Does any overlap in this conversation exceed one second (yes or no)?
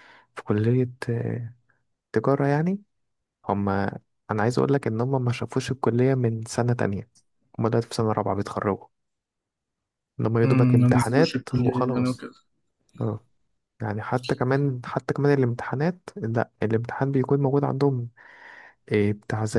yes